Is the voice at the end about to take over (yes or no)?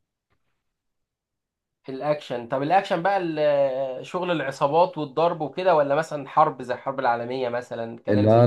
yes